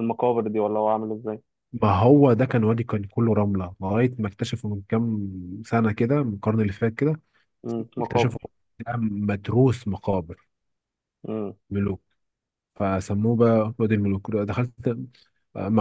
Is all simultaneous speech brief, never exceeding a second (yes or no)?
yes